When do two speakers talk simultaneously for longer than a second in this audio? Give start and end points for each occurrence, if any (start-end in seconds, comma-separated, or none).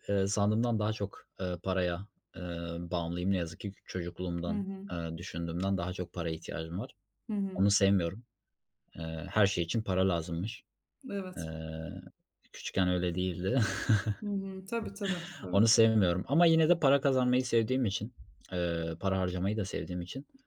none